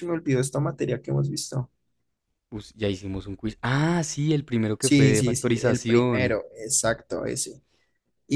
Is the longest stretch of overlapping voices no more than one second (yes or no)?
no